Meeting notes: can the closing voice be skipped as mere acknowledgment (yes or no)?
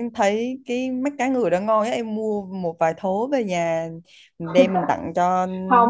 no